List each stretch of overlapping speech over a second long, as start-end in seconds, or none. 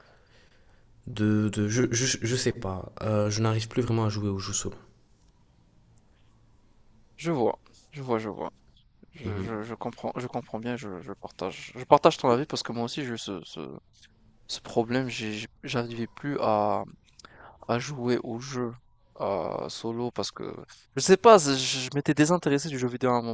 none